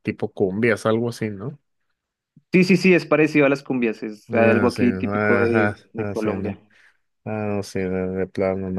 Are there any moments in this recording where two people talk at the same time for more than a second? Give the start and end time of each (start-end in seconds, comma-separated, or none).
4.3-6.6